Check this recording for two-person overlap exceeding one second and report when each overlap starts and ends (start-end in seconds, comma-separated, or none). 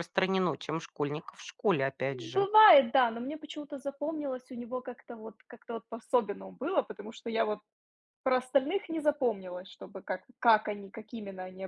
none